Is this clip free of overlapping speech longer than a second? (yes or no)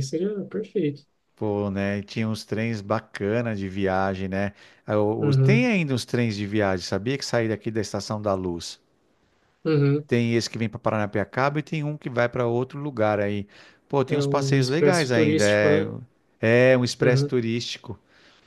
no